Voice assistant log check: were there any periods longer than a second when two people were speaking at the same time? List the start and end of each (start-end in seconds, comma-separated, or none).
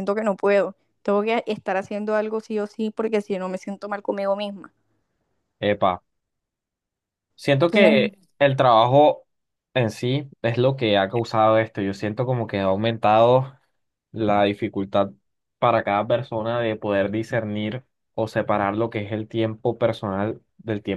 none